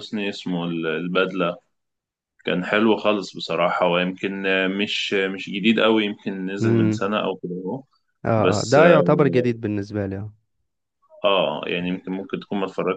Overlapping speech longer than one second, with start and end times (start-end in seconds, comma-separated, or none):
none